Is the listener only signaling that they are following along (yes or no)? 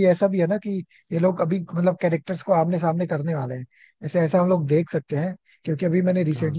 yes